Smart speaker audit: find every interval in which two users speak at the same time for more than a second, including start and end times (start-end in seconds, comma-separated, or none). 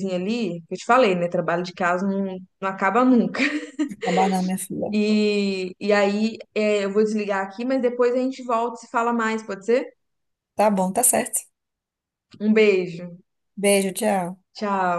none